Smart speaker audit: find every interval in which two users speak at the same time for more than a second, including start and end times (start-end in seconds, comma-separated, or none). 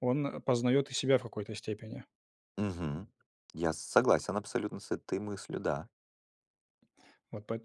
none